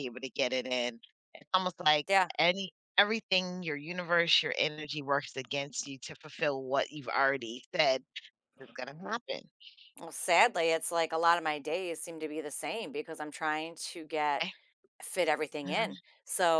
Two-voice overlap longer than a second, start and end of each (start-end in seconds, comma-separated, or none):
none